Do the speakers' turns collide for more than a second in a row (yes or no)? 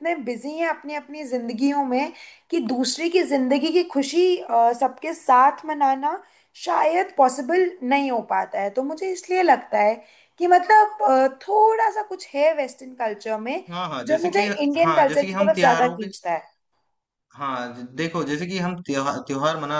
yes